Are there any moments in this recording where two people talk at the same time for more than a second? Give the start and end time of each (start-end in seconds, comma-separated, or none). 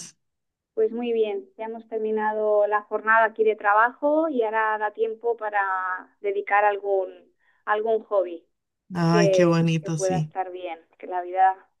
9.1-10.3